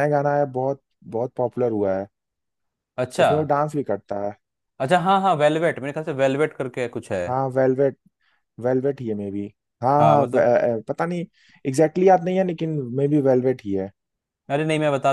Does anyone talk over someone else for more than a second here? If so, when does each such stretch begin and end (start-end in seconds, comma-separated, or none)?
none